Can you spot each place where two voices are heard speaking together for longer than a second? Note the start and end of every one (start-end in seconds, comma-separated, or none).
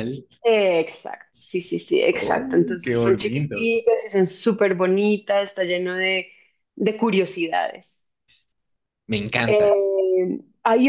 2.1-3.7